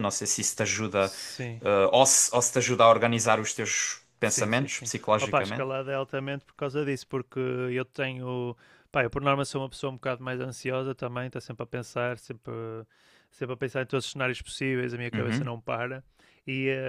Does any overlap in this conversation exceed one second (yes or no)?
yes